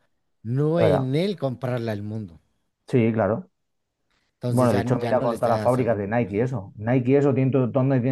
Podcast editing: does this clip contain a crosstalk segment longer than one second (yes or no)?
yes